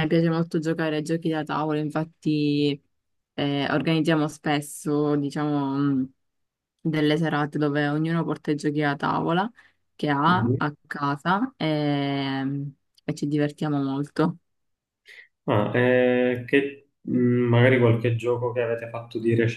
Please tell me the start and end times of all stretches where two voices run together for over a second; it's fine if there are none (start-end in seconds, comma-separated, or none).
none